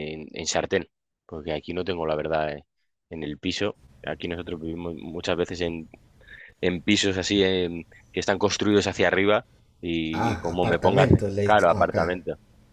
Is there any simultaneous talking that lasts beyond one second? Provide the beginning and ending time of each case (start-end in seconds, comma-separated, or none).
10.1-12.2